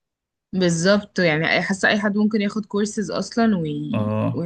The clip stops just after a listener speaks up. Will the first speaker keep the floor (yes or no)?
no